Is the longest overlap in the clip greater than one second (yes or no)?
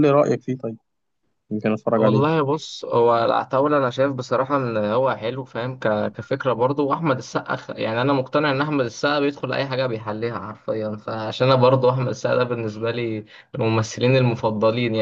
no